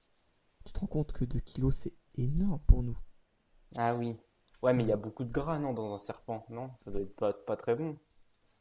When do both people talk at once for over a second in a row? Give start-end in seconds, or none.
none